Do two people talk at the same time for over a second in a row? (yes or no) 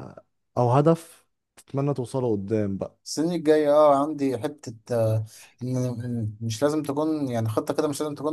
no